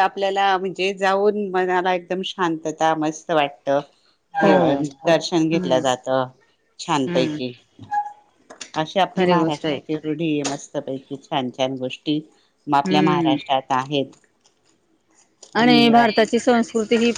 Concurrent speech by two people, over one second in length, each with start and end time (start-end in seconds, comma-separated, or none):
none